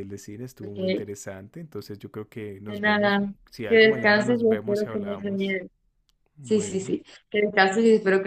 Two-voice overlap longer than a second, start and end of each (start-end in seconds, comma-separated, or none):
2.6-5.6